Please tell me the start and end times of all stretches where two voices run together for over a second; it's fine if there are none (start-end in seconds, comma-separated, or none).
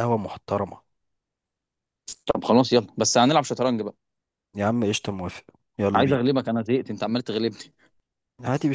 none